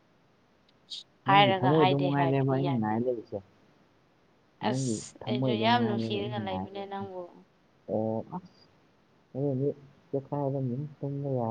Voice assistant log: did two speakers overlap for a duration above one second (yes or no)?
yes